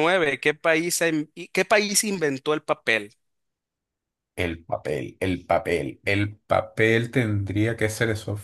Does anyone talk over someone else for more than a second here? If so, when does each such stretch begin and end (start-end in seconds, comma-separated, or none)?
none